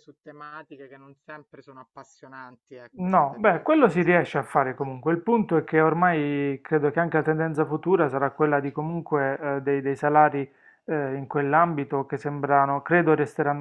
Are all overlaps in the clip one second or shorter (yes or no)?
no